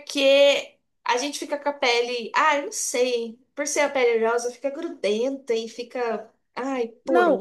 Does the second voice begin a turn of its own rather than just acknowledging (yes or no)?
yes